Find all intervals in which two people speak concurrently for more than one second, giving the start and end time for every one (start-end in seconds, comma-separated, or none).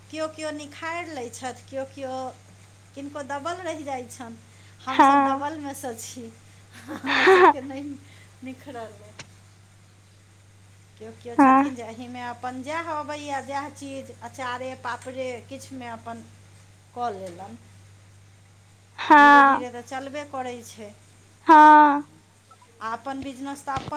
none